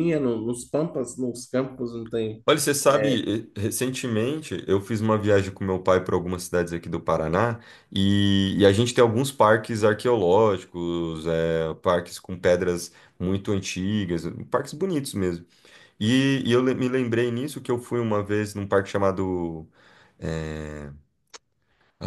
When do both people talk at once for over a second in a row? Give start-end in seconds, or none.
none